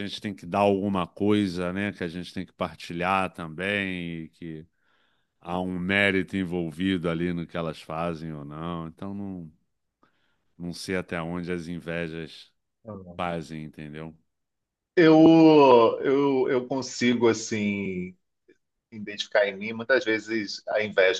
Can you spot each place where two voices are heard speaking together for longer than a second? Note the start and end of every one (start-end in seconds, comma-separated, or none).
none